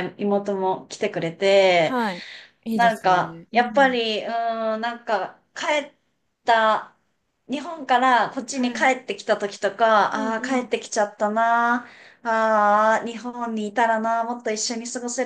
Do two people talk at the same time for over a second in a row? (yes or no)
yes